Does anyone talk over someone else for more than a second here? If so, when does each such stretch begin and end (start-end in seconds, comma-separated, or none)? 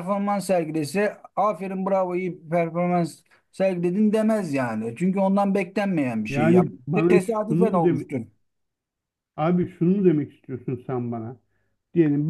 6.3-8.0